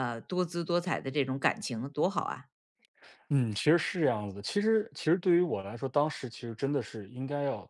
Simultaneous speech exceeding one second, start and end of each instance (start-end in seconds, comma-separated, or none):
none